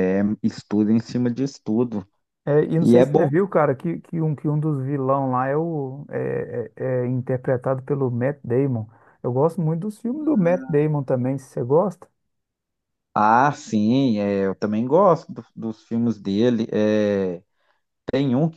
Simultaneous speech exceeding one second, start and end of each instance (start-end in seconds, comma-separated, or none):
none